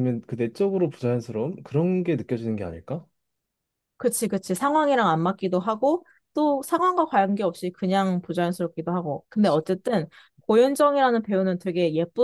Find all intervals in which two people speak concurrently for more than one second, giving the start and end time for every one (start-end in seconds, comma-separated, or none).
none